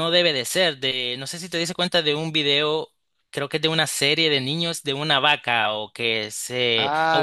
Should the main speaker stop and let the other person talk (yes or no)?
yes